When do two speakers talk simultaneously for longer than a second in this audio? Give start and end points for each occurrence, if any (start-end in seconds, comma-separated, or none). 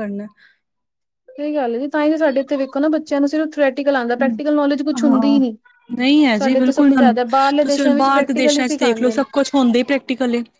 7.7-9.2